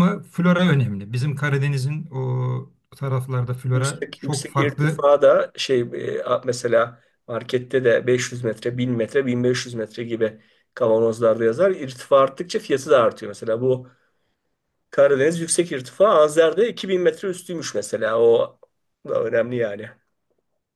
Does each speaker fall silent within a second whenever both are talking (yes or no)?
no